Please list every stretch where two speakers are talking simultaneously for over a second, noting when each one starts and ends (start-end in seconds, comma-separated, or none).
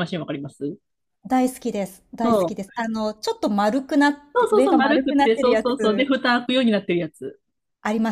4.3-5.7